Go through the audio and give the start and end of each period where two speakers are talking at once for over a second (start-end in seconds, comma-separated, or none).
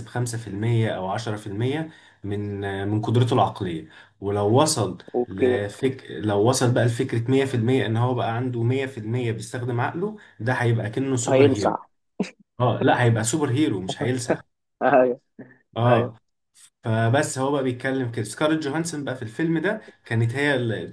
none